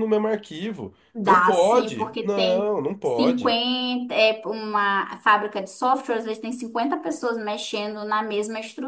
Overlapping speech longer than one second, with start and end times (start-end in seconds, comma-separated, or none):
1.1-3.6